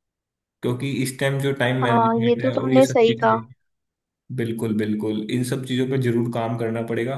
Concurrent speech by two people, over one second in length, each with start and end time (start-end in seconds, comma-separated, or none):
1.8-3.4